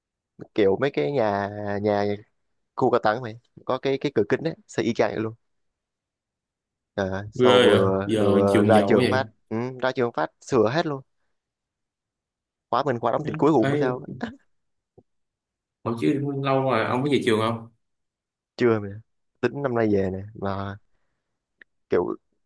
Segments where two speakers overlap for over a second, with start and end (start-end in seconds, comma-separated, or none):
7.3-9.2